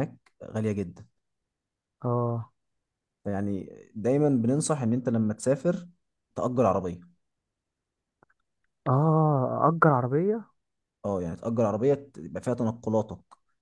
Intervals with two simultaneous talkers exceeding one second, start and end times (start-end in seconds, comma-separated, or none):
none